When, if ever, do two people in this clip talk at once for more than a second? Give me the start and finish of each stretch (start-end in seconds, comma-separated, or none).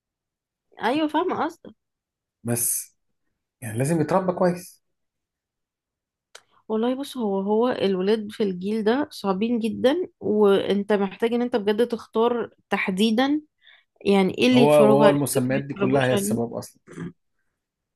14.5-16.4